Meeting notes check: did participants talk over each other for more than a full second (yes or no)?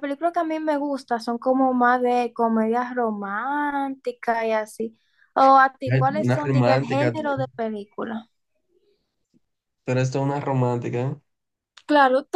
yes